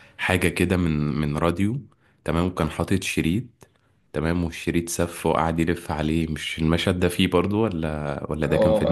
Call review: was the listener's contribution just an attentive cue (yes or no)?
no